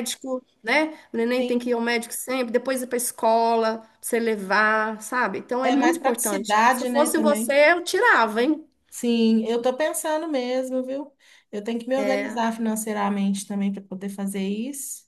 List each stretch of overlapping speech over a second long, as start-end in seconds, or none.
5.6-7.6